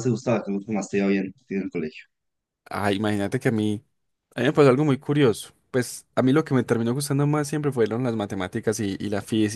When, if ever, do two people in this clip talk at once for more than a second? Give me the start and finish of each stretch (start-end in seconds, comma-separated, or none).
none